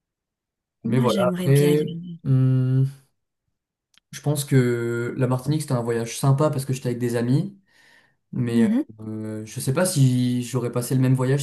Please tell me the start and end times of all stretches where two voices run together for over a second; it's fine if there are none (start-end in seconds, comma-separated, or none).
0.8-2.2